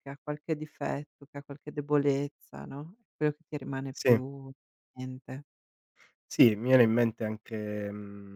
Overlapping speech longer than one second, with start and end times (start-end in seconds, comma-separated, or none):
none